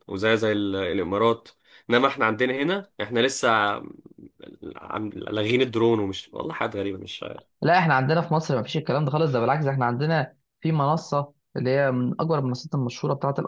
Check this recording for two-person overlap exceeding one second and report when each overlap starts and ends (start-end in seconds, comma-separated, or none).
none